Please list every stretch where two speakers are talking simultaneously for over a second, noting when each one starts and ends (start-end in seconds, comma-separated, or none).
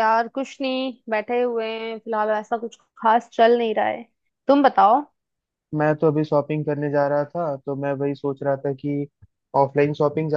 none